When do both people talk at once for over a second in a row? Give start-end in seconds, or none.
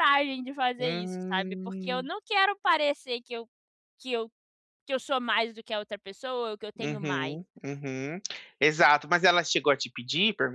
0.8-2.1